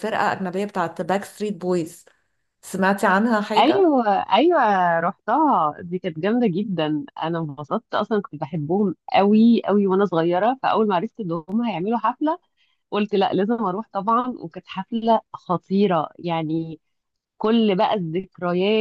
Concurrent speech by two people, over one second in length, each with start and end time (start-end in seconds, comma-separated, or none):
none